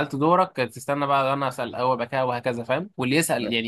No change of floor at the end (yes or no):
yes